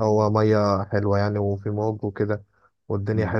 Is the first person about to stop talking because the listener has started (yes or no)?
yes